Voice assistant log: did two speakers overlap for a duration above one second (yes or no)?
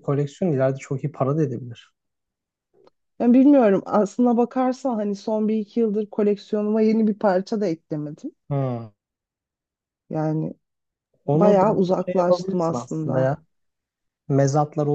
yes